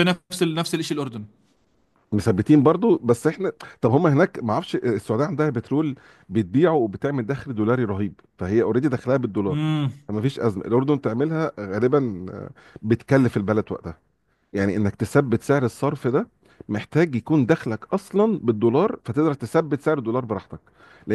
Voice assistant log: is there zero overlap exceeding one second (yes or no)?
yes